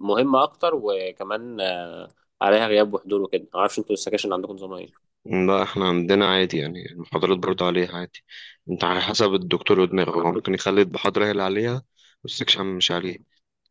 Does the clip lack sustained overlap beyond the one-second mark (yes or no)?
yes